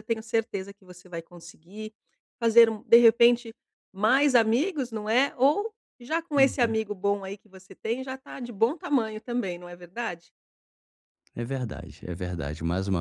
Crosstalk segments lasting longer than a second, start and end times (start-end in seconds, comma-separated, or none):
none